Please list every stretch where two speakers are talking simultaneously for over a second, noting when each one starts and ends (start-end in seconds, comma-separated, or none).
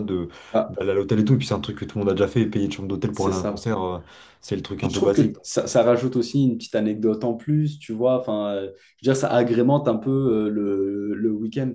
none